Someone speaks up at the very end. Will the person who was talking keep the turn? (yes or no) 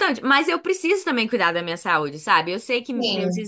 yes